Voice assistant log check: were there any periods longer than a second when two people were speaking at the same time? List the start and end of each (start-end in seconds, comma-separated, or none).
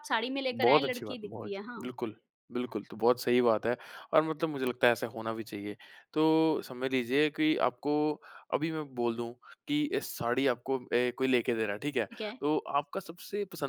0.5-1.9